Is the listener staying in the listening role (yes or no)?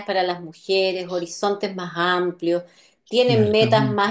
yes